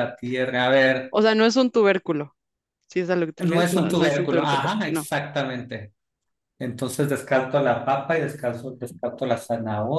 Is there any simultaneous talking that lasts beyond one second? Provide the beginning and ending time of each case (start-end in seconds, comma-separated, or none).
3.4-5.1